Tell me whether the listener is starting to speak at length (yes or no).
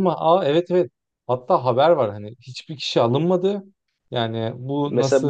yes